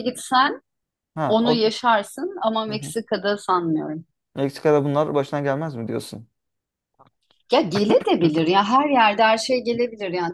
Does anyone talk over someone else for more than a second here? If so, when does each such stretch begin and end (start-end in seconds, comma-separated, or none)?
none